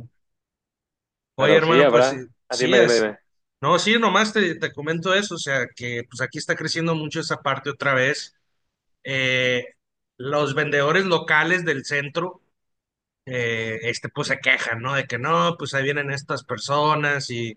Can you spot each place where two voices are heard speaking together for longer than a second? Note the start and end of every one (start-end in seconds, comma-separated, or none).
1.4-3.1